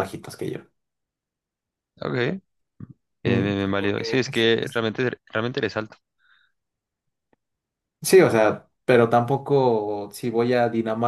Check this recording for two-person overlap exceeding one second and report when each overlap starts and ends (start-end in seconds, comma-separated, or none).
3.2-4.8